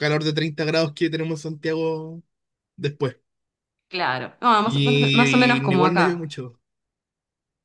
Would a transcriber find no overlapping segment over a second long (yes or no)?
no